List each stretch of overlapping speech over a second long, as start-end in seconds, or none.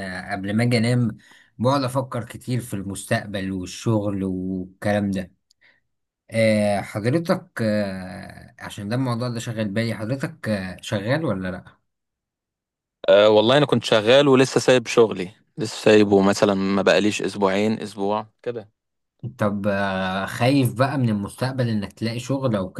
none